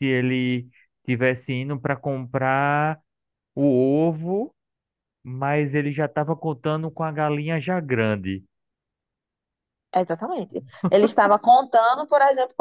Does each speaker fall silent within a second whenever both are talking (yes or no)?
yes